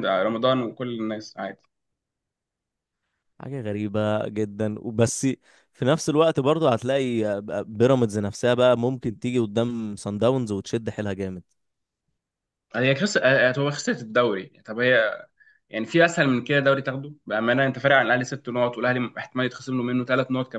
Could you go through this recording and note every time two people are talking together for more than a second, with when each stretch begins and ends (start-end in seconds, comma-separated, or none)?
none